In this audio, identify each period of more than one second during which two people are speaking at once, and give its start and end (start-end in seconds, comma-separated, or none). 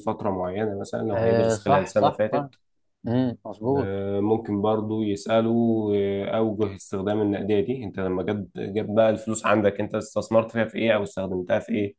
1.1-2.5